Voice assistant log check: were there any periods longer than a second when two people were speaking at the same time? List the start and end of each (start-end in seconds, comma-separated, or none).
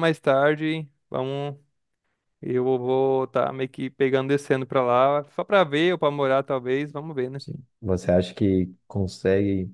none